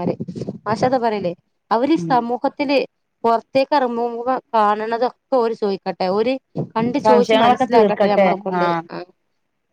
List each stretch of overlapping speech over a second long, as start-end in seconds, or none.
7.0-8.8